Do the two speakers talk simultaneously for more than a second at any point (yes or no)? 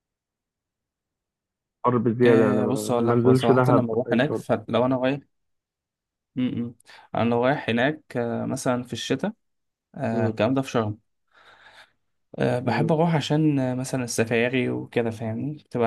yes